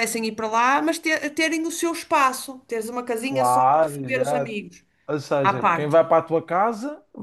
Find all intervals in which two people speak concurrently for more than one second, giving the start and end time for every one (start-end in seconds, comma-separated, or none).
3.2-4.6